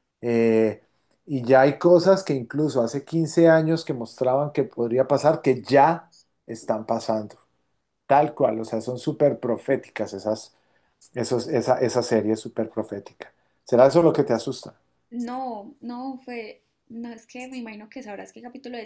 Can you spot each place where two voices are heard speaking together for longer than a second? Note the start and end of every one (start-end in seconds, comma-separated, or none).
none